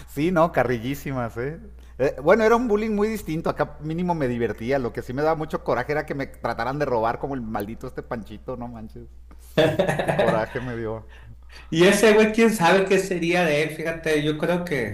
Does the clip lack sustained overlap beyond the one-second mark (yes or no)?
yes